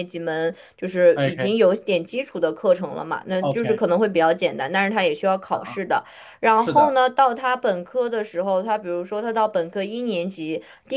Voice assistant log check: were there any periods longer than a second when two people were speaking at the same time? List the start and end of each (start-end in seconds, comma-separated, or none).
none